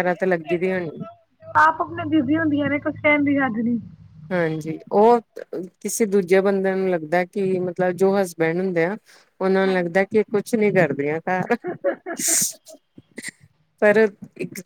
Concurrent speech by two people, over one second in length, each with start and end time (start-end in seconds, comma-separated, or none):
none